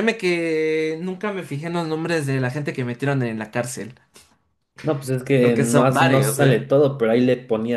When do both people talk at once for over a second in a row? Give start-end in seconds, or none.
5.4-6.6